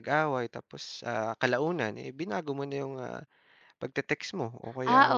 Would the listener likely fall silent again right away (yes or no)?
no